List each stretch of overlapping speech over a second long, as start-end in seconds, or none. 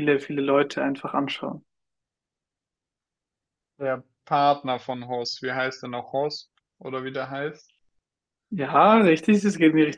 none